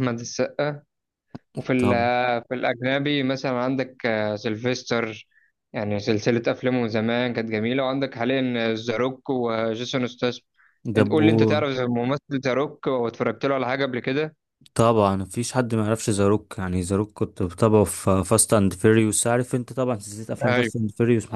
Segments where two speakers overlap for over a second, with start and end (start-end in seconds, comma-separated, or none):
none